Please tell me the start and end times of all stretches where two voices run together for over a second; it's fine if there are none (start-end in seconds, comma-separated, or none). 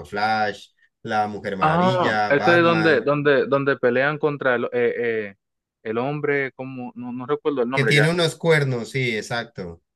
1.6-3.1